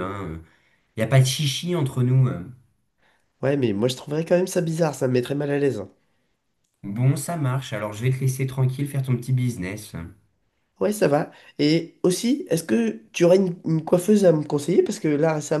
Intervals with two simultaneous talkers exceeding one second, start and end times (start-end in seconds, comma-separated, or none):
none